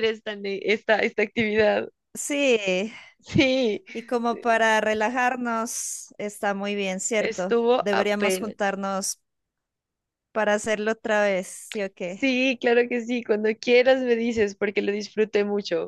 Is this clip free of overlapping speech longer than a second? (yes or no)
no